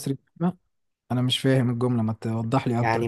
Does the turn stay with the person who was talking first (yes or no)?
no